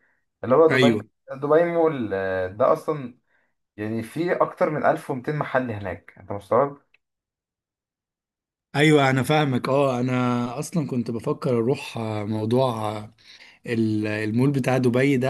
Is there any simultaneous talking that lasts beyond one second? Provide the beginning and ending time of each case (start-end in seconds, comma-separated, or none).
none